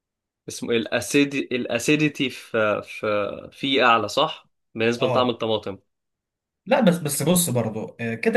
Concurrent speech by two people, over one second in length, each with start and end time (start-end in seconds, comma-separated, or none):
none